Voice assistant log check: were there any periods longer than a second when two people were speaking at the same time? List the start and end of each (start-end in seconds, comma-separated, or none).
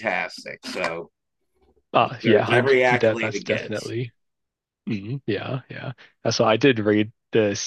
2.2-3.9